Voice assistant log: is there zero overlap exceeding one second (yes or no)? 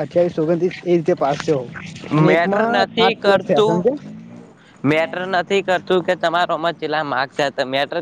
yes